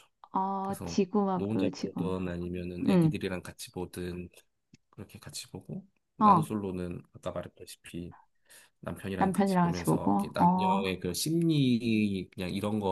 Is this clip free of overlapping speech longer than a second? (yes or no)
no